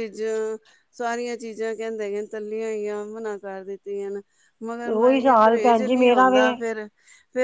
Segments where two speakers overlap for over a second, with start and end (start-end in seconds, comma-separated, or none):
4.8-6.4